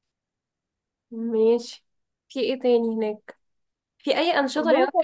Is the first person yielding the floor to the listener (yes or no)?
no